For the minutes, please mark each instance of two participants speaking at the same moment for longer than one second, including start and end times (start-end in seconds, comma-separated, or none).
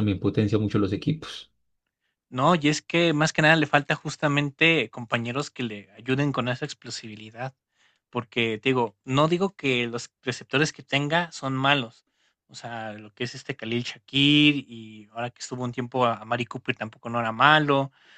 none